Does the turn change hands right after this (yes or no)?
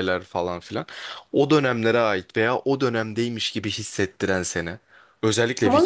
yes